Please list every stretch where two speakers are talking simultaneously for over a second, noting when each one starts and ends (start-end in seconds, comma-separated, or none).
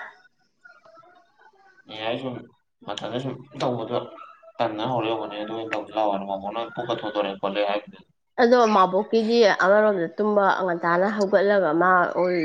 none